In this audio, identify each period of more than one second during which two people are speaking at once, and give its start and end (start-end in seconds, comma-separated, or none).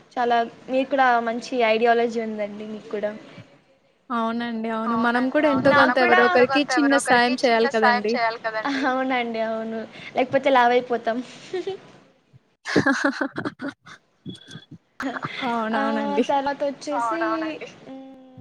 4.9-8.1